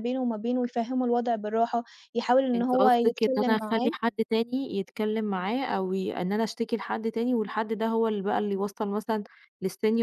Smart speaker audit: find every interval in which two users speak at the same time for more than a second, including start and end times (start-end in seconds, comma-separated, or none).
2.5-3.9